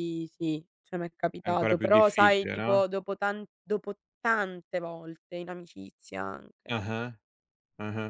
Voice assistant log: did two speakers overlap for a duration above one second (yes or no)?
yes